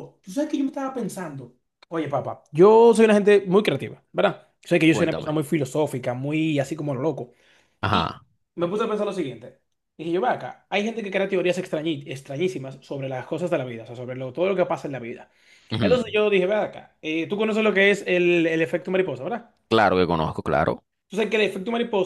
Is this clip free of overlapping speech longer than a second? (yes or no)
yes